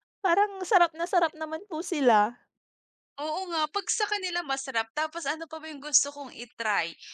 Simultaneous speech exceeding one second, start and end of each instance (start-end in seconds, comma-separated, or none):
none